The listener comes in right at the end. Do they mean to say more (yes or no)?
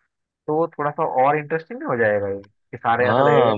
yes